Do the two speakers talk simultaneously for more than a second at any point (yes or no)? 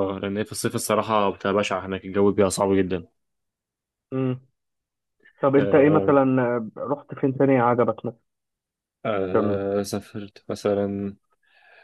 no